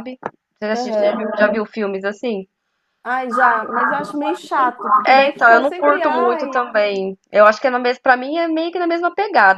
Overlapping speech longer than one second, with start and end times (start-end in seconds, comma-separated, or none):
5.1-6.7